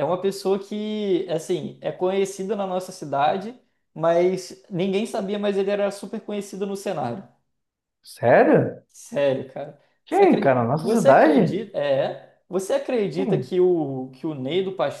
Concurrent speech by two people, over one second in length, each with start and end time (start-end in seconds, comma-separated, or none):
10.0-11.6